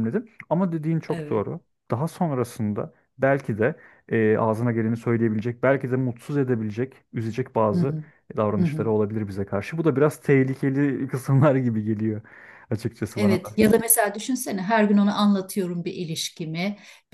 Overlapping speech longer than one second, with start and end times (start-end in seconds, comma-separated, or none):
none